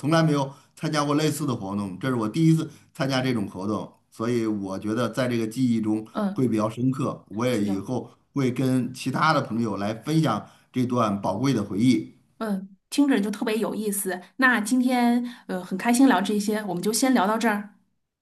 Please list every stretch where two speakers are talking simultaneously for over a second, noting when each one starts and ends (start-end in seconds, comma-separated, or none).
none